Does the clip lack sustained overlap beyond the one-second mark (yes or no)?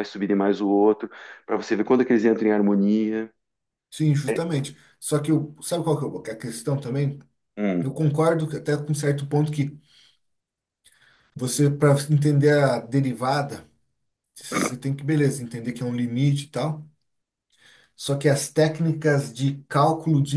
yes